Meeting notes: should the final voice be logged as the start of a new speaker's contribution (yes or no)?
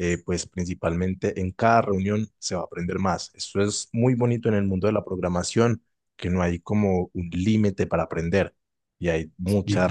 no